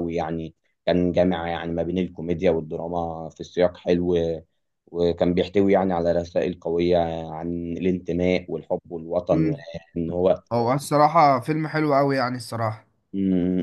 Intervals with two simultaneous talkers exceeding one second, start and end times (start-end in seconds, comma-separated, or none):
none